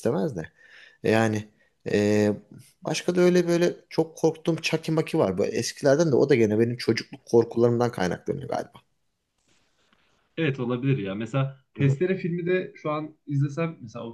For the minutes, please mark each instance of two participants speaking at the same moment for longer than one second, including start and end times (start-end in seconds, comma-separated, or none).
none